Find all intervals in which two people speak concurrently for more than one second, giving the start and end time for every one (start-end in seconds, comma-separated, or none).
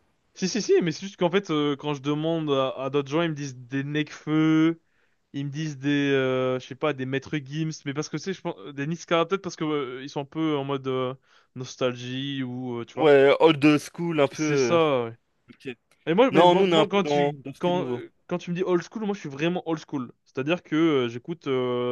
16.3-17.9